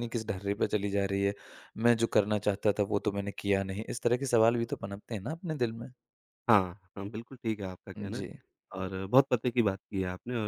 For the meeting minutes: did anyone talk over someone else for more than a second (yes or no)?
no